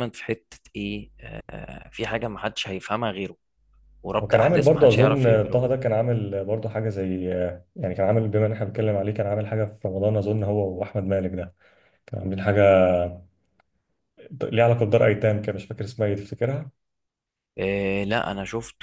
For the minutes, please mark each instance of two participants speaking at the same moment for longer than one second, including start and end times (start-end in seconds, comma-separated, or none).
4.2-5.7